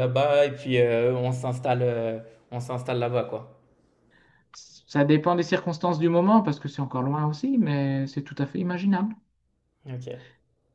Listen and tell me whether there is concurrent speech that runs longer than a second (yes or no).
no